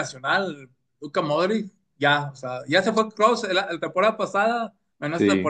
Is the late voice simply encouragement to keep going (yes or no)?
yes